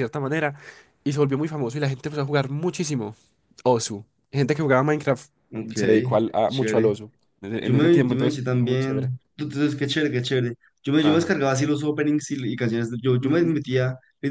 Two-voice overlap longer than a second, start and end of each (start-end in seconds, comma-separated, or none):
7.6-9.1